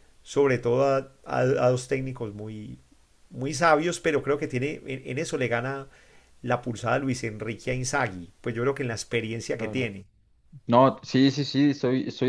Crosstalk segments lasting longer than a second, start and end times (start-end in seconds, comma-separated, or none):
none